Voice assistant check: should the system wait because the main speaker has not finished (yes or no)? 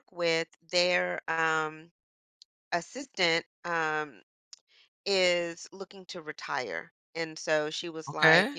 yes